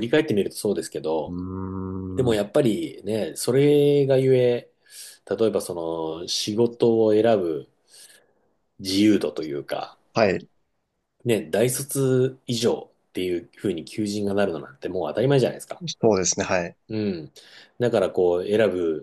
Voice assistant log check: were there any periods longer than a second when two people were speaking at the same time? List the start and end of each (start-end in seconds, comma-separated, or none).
none